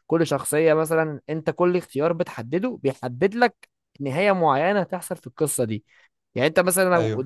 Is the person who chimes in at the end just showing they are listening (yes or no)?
yes